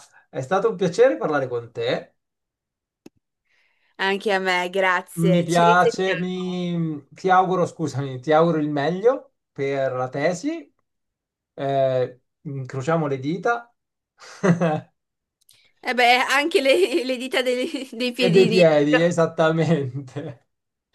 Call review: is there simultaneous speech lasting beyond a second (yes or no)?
yes